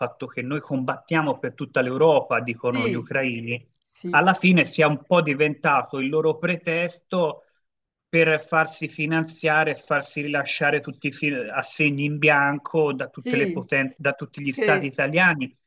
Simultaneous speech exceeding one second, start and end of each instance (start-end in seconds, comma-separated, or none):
none